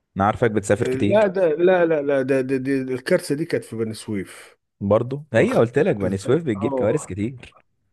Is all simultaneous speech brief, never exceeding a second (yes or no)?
no